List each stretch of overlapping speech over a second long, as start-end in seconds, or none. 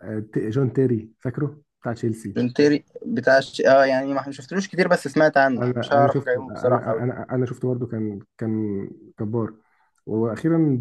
5.6-7.0